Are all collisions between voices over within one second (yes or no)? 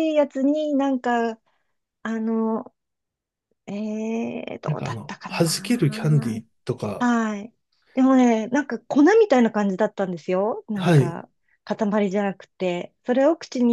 no